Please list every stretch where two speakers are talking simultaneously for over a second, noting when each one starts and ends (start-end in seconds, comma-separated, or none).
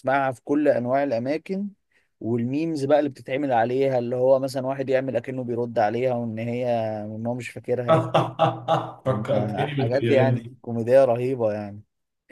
9.3-10.5